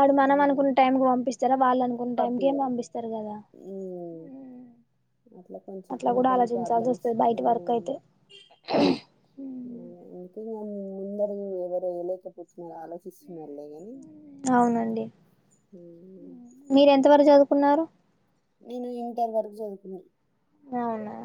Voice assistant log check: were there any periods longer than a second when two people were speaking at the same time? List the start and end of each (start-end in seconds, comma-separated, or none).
6.0-7.9